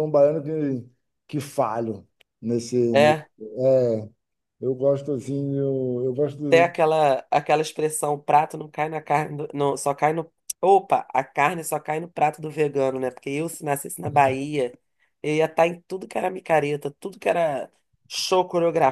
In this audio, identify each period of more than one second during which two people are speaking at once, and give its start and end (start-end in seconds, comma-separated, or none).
none